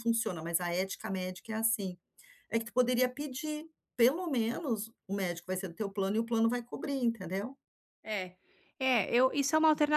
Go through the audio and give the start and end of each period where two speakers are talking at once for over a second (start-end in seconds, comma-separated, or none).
none